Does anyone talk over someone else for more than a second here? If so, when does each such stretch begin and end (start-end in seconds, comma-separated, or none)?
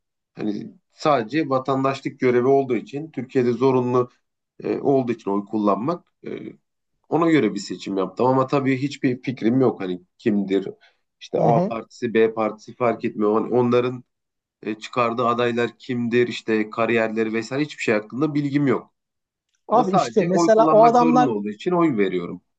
19.7-21.3